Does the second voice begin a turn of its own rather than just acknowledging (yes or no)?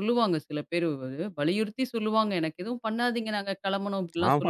yes